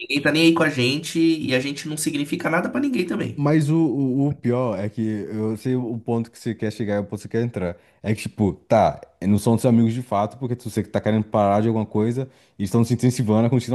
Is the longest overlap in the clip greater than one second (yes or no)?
no